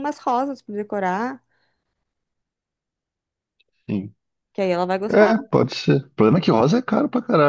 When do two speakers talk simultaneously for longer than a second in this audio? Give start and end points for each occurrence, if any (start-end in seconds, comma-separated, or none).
none